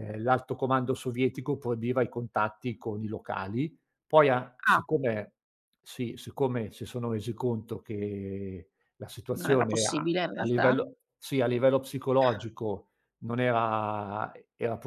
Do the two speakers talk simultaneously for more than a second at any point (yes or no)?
yes